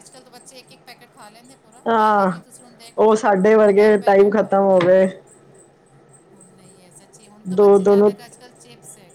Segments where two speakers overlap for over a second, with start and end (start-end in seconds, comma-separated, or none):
3.1-4.8